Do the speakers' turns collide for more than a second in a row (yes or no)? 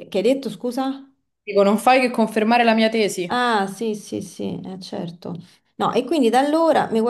no